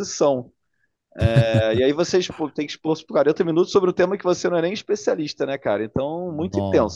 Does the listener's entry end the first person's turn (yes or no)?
no